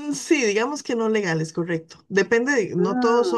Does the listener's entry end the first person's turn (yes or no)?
no